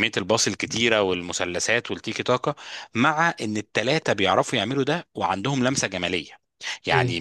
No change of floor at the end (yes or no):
yes